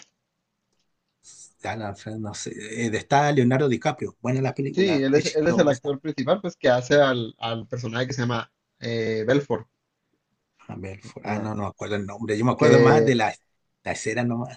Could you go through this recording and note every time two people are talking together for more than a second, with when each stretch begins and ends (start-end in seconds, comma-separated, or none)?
4.7-5.9